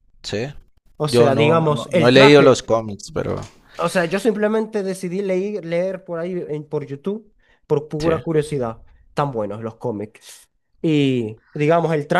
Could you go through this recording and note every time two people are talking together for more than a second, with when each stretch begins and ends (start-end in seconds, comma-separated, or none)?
1.1-2.6